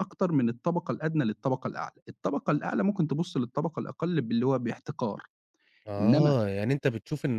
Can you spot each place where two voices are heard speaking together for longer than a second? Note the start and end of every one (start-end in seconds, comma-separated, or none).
none